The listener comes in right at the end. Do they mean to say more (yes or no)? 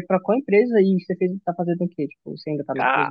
yes